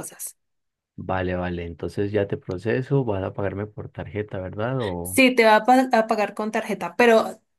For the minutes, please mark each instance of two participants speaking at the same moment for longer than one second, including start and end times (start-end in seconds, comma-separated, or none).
none